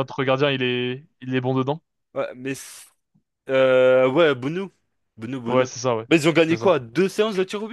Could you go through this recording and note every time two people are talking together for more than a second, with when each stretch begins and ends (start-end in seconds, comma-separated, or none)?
none